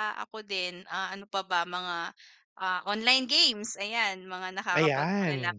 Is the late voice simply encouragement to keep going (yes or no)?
no